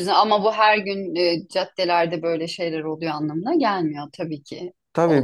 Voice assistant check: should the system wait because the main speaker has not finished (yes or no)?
no